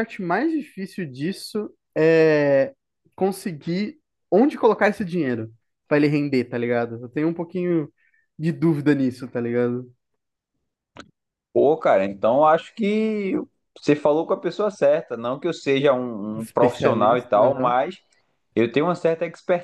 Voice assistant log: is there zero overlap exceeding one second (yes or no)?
no